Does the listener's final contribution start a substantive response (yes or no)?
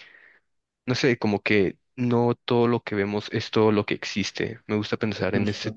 no